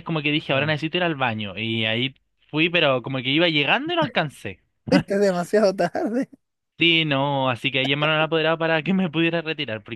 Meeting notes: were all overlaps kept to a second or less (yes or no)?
yes